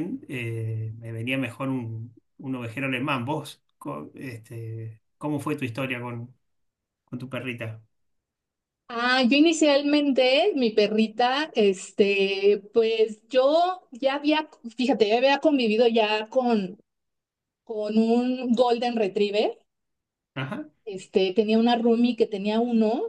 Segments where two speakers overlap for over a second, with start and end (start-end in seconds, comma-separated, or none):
none